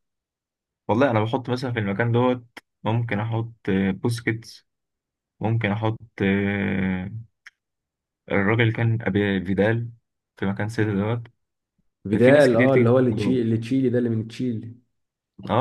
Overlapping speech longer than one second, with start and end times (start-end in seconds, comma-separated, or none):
12.2-13.4